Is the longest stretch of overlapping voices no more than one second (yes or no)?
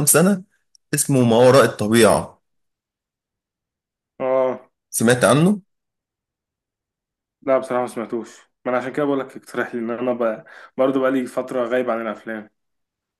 yes